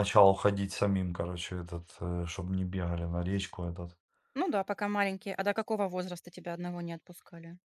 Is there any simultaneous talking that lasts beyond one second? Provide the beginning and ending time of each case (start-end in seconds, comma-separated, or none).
none